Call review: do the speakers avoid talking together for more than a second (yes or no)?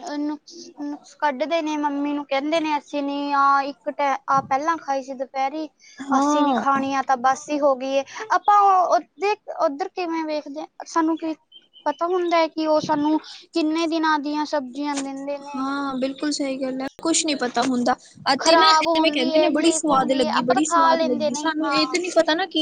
no